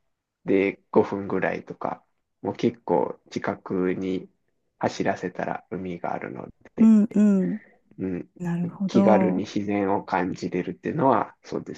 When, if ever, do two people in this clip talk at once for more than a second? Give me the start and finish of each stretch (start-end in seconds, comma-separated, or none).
none